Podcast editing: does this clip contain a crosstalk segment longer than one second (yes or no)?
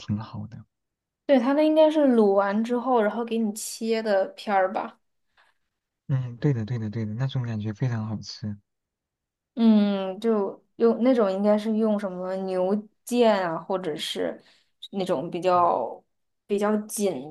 no